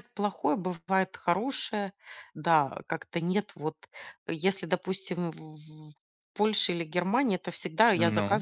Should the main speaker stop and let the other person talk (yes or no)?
no